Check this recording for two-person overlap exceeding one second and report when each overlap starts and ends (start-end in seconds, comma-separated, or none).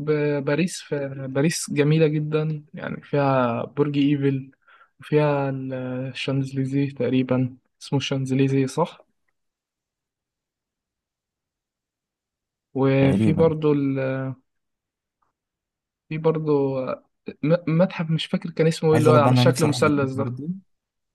18.9-20.4